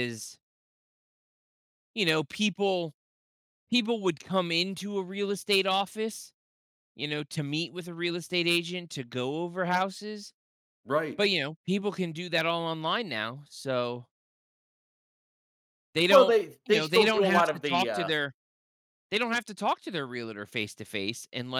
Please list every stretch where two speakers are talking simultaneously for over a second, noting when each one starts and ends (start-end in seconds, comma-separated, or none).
16.1-18.1